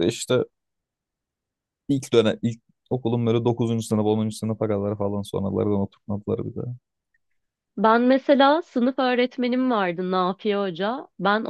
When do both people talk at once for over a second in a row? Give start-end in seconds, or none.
none